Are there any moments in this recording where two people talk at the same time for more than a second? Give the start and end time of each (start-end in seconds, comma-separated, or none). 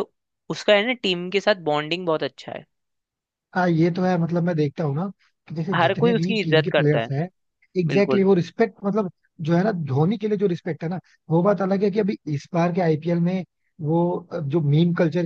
5.8-7.1